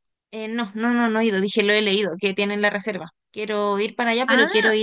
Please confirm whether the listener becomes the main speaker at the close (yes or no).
no